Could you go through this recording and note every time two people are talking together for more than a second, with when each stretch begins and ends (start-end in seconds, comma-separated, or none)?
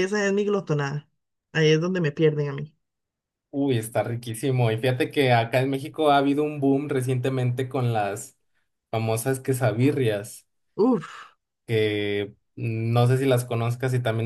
none